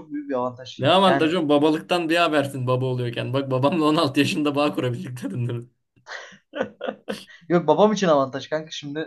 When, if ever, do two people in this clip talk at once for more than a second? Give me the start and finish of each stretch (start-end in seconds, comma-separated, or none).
none